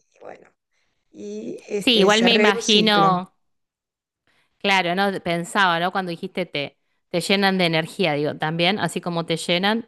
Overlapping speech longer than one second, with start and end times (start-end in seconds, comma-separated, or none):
1.8-3.2